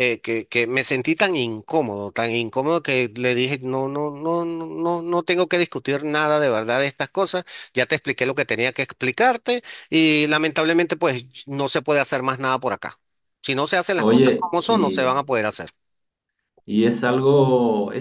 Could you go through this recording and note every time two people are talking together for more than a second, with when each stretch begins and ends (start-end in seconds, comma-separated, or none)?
14.0-15.2